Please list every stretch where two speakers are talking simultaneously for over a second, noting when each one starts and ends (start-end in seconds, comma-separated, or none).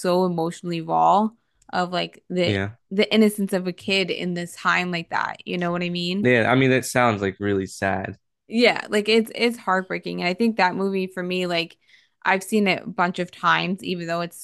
none